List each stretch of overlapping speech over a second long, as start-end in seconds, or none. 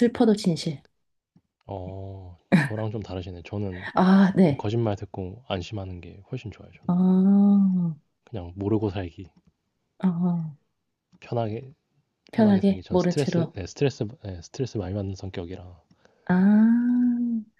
12.3-13.5